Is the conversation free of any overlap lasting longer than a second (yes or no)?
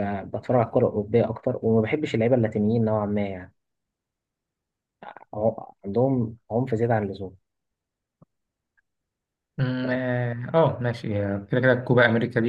yes